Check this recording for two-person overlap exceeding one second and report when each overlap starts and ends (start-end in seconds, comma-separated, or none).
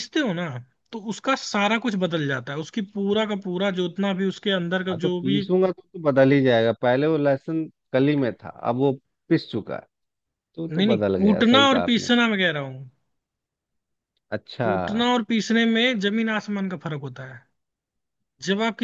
10.7-12.1